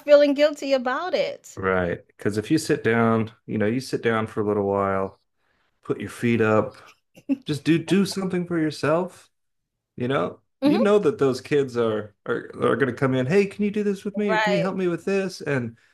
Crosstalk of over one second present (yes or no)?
no